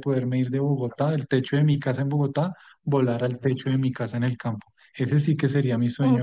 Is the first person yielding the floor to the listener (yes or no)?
yes